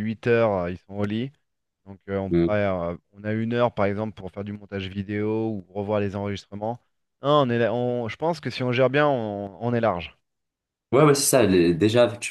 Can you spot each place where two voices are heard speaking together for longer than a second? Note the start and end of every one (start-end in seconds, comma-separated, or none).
none